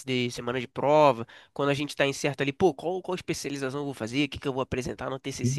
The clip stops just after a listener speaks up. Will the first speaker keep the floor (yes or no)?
yes